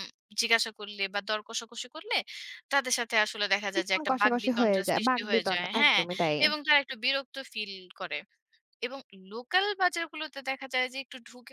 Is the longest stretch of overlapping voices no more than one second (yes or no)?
no